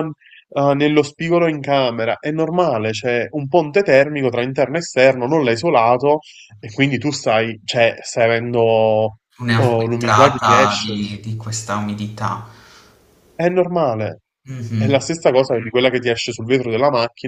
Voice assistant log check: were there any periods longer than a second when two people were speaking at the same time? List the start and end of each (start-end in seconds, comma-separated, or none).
9.5-10.9